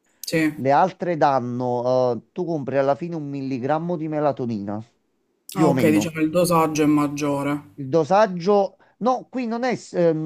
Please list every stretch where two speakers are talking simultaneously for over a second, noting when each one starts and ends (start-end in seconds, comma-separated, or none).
none